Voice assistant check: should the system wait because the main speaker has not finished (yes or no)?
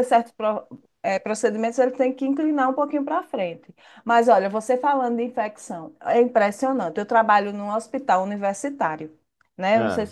yes